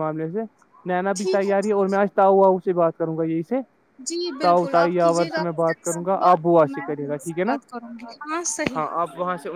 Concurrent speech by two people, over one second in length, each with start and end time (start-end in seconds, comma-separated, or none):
4.4-7.6